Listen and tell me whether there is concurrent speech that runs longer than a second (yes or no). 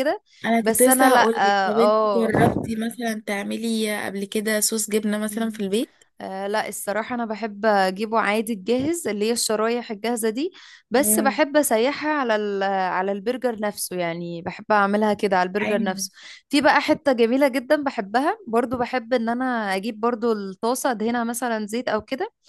yes